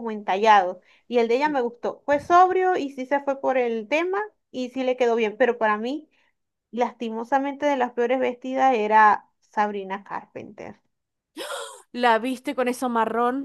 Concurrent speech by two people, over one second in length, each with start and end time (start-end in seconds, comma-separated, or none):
none